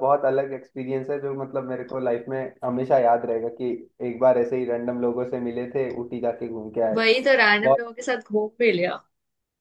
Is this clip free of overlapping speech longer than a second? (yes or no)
yes